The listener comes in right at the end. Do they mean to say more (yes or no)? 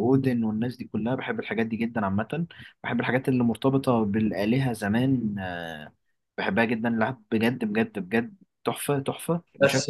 yes